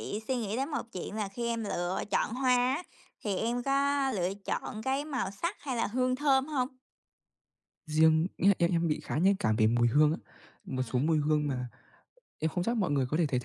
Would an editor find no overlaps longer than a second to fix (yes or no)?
yes